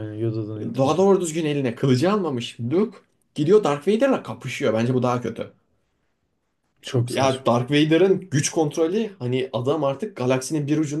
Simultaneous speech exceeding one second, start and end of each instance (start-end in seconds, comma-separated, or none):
none